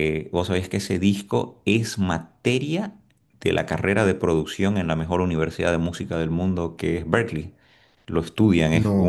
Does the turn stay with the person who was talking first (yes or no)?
yes